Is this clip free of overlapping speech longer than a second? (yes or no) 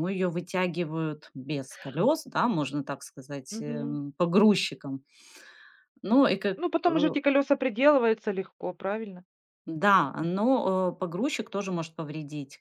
yes